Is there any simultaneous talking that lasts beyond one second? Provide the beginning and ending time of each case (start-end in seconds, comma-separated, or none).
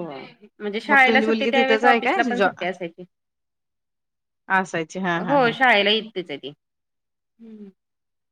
0.9-2.5